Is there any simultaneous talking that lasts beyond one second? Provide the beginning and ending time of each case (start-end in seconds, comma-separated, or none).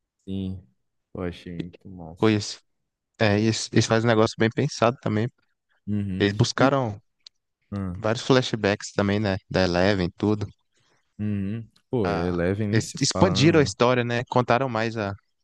12.0-13.8